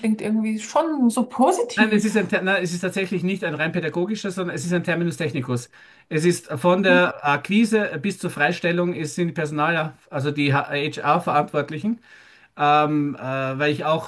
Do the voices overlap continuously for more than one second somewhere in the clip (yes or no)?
no